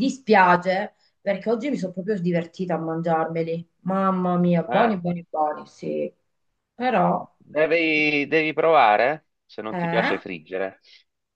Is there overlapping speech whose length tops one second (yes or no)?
no